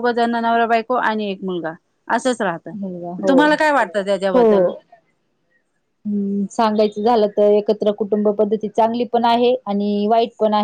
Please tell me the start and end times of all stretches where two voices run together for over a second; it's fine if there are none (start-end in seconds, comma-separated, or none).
none